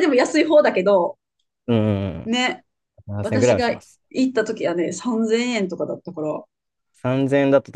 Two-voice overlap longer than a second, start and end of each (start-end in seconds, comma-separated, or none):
none